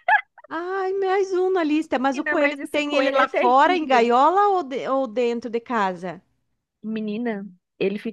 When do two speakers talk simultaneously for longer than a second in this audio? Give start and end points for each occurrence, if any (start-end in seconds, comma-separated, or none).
2.1-4.1